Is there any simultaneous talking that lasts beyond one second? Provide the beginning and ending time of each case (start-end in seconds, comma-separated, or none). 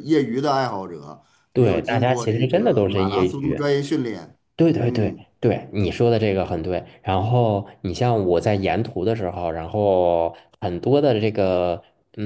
1.5-3.6